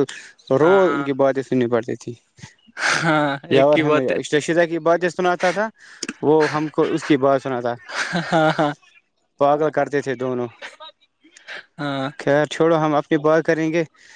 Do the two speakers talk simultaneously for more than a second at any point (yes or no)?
yes